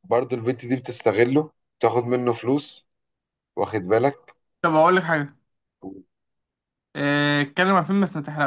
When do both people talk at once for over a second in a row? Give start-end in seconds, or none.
none